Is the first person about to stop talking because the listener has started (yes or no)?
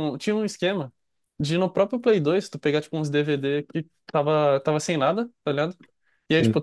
no